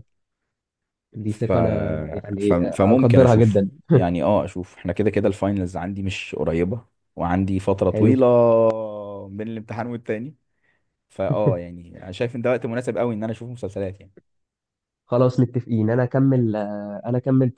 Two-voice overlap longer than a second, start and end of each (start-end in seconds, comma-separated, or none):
2.4-3.7